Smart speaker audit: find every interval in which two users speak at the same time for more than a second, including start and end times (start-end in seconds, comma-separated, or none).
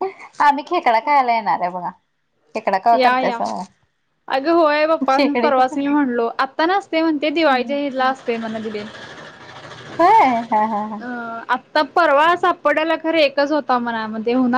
none